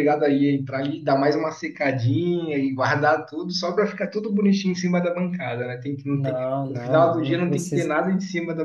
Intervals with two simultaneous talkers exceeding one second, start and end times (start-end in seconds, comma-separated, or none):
6.1-7.9